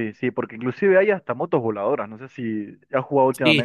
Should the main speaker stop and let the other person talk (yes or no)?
yes